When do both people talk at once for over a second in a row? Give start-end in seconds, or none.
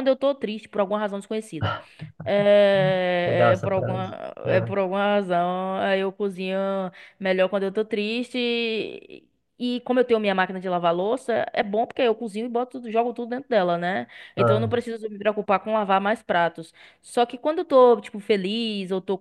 3.2-4.7